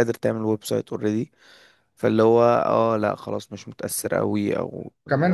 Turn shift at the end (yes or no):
yes